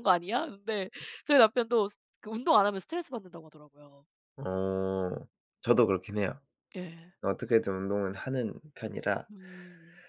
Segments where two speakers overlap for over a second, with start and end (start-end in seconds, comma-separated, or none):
none